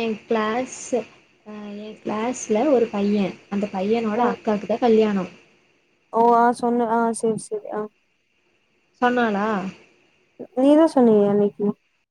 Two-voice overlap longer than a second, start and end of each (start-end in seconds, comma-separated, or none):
none